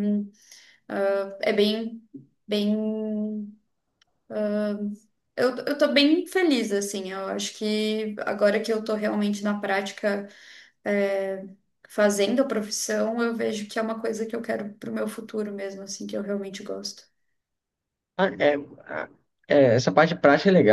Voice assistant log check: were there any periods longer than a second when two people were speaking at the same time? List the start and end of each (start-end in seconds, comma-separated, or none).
none